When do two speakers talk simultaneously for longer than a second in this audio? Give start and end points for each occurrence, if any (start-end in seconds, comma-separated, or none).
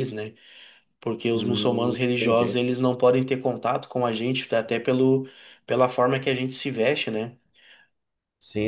1.3-2.6